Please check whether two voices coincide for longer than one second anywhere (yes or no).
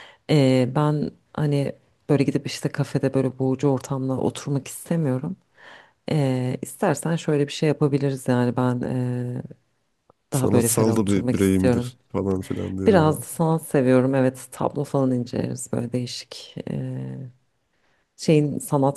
yes